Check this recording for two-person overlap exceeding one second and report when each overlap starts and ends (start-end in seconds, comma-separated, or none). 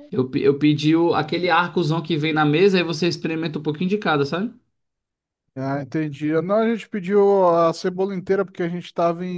none